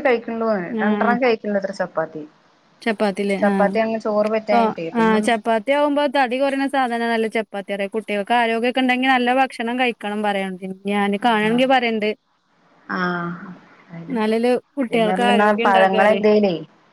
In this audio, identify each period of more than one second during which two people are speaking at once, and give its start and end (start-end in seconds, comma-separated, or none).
3.4-5.2